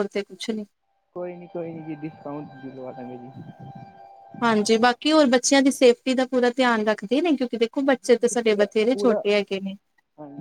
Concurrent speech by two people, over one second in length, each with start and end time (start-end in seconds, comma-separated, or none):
7.7-9.2